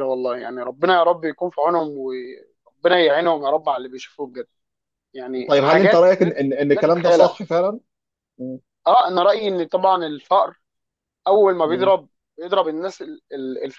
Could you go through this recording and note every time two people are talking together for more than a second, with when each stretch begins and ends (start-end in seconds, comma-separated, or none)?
5.5-7.3